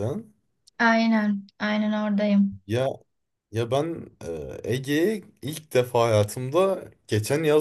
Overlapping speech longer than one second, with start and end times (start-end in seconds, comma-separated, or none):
none